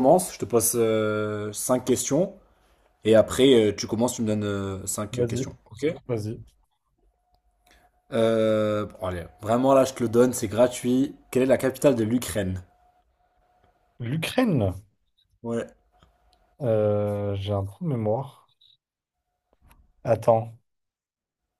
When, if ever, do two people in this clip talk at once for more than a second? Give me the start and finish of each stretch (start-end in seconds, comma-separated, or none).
none